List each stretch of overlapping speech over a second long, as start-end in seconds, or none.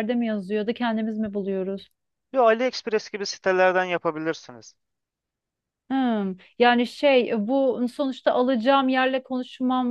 none